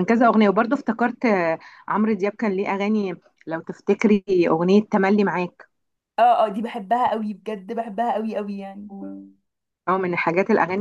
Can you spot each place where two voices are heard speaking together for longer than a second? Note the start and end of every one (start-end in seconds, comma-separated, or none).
none